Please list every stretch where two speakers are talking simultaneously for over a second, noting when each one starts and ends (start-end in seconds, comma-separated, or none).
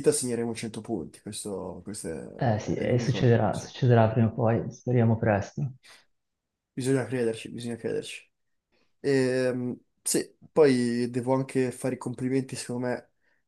2.4-3.7